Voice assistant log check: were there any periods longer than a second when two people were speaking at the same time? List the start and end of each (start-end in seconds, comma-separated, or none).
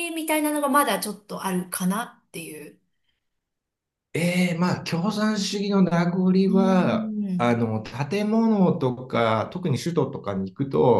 none